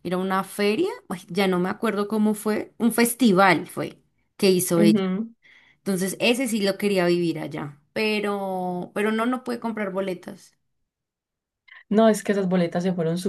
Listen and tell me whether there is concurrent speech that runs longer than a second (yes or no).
no